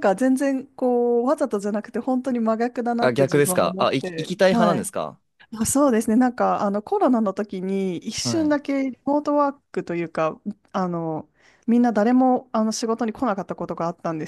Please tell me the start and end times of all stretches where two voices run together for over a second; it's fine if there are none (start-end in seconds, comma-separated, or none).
3.0-4.8